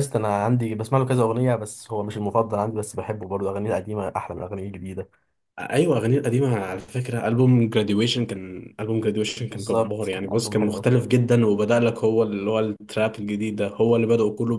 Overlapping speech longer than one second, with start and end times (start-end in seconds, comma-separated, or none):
9.4-10.9